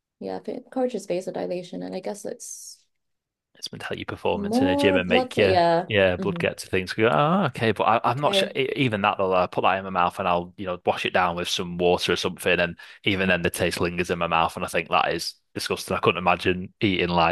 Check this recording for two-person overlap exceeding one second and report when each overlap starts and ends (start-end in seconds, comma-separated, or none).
4.3-6.4